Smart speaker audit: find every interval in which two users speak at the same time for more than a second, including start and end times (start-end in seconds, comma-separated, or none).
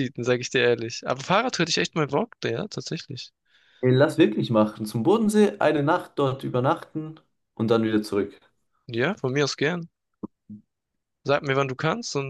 none